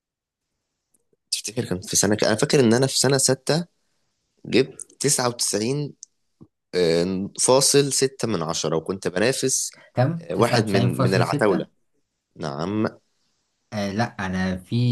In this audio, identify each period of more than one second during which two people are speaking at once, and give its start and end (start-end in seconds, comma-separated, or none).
10.2-11.7